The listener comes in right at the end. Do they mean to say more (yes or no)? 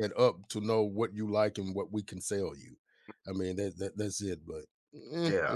yes